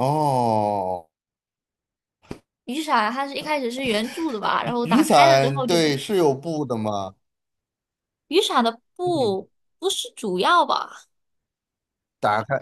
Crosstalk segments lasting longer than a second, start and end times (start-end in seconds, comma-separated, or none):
4.8-6.0